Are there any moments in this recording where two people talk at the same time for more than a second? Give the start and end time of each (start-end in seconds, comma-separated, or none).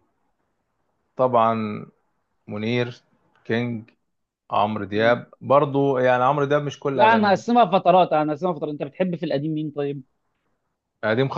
none